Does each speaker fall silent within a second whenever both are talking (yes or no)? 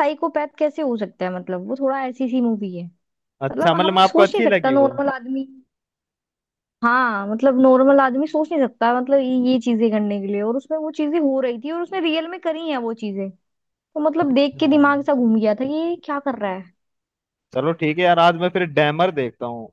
no